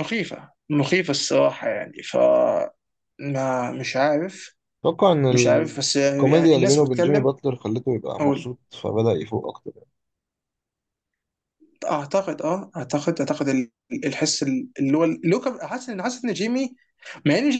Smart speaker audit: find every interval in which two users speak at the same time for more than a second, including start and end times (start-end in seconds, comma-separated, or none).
5.3-7.3